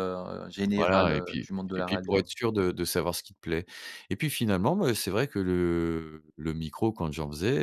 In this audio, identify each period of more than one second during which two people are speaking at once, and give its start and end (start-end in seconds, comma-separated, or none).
0.8-2.3